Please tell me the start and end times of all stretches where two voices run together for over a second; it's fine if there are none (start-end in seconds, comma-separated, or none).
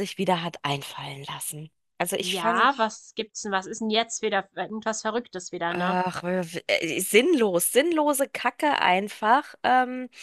none